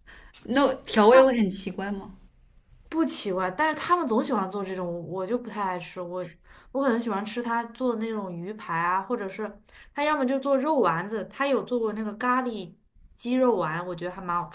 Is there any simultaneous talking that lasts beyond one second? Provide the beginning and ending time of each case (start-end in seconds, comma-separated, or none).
none